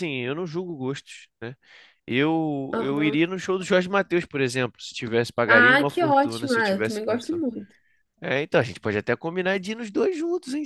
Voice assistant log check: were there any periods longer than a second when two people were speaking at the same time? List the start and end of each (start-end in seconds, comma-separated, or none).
5.5-7.4